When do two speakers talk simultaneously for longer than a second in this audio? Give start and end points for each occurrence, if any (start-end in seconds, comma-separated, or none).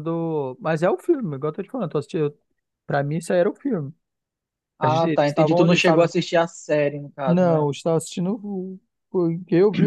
4.8-6.1